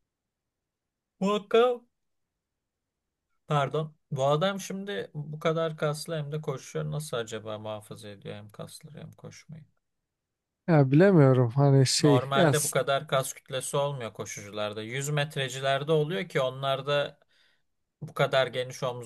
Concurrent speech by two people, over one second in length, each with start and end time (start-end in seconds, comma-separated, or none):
none